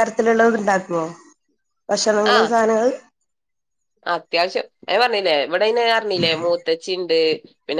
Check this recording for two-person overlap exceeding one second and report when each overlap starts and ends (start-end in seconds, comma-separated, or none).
none